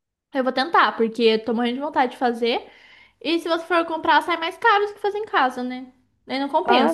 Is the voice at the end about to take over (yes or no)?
yes